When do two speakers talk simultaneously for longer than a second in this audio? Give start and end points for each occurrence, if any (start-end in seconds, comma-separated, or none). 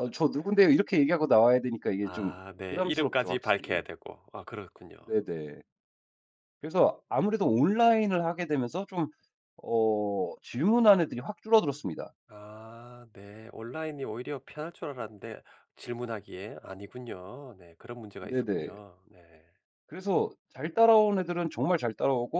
2.0-3.8